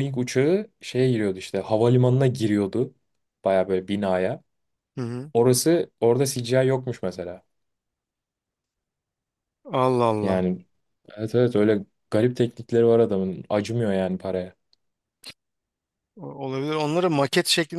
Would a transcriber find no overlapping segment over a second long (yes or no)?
yes